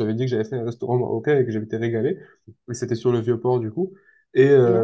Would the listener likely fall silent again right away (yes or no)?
yes